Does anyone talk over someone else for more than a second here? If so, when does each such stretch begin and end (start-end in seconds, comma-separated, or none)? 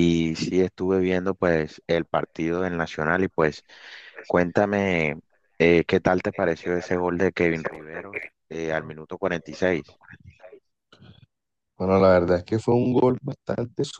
7.5-10.0